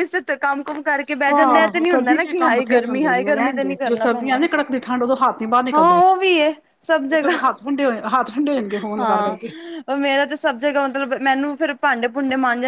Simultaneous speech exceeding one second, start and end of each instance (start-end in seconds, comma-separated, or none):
1.3-4.4